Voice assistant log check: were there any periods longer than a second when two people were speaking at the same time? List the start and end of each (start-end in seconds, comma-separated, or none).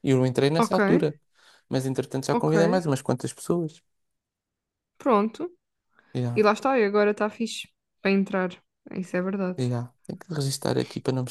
none